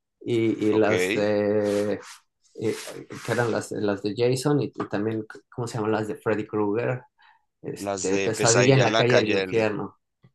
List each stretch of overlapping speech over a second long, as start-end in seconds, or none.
7.7-9.7